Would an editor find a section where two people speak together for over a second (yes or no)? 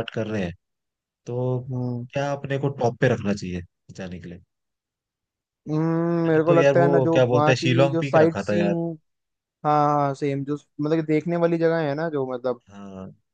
yes